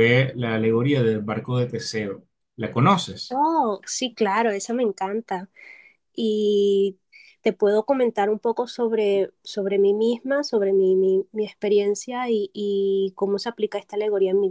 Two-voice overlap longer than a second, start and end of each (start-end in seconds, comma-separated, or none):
none